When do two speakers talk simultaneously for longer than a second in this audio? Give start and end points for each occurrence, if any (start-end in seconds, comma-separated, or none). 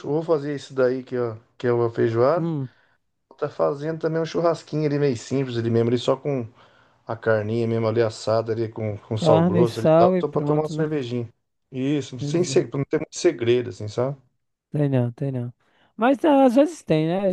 9.2-10.9